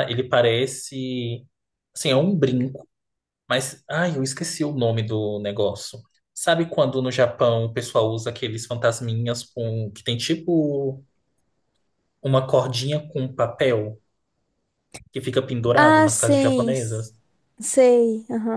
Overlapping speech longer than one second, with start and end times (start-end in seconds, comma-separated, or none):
15.7-17.1